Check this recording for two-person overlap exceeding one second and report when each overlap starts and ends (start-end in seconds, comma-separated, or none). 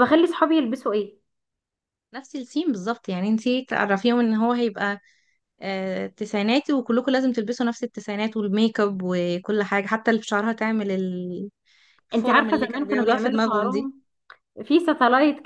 12.2-13.9